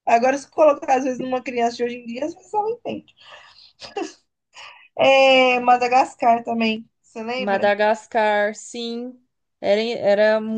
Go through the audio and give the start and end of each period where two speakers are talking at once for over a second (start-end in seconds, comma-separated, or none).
none